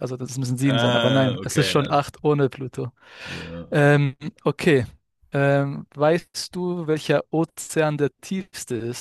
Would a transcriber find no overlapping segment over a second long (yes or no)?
no